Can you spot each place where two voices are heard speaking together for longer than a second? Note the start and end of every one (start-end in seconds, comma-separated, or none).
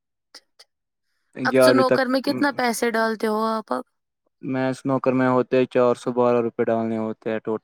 none